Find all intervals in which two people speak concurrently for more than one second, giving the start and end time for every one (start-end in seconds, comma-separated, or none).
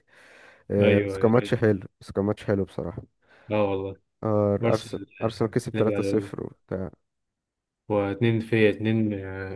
4.6-6.3